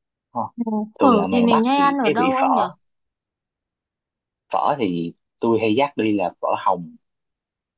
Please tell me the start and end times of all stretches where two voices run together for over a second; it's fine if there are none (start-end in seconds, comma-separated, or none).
1.0-2.6